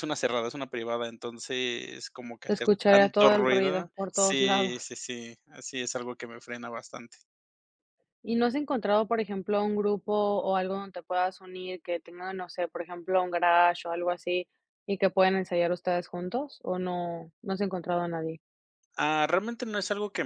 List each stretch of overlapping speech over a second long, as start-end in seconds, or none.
2.5-4.9